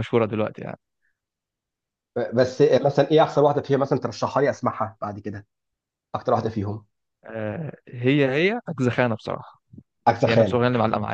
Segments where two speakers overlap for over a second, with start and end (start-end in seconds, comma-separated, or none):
none